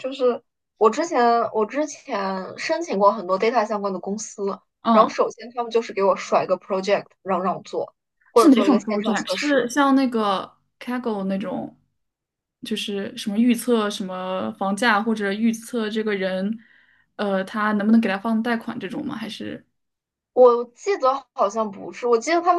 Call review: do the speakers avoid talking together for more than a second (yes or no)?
no